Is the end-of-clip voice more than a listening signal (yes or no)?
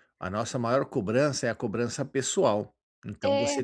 no